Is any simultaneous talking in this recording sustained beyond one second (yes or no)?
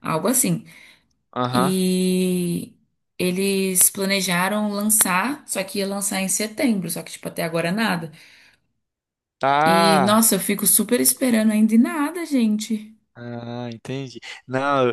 no